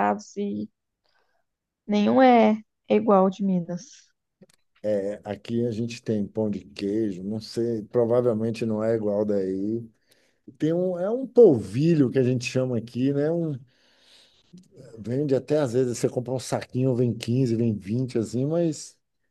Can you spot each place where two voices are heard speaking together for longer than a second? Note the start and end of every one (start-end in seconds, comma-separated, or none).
none